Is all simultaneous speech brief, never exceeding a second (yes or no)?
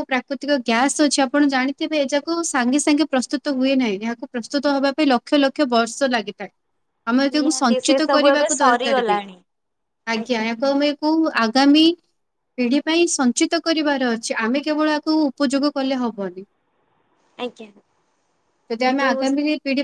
no